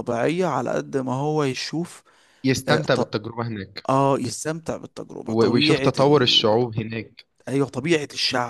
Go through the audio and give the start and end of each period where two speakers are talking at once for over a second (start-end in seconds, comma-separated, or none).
5.3-6.6